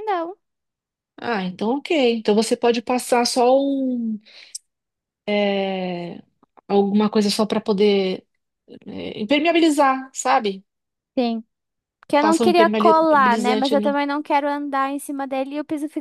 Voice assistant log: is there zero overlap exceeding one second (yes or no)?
no